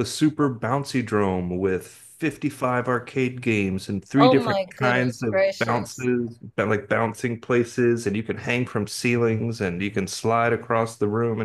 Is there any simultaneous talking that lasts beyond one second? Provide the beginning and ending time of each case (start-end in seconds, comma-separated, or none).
4.2-6.1